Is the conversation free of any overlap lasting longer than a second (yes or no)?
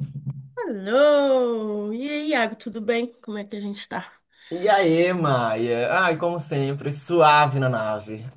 yes